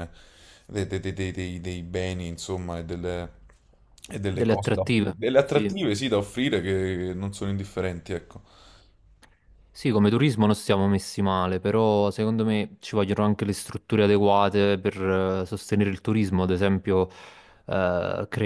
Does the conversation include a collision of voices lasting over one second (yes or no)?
yes